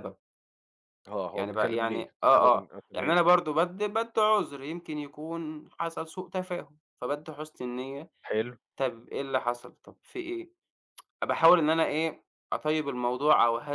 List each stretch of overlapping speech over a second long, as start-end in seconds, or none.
1.3-3.2